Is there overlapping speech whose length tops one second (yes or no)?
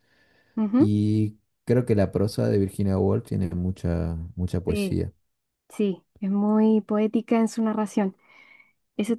no